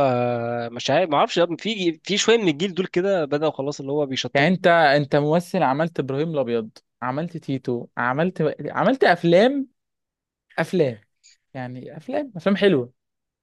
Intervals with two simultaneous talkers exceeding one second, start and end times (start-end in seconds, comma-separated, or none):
none